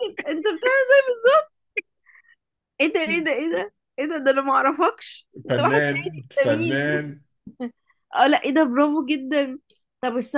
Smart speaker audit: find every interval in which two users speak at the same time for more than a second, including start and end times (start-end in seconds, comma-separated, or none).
5.5-6.9